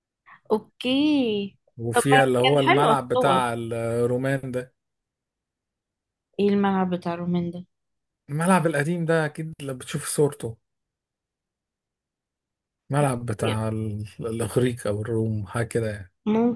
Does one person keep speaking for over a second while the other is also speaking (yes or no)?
yes